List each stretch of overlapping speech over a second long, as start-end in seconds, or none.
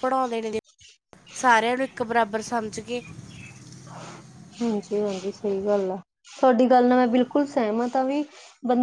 none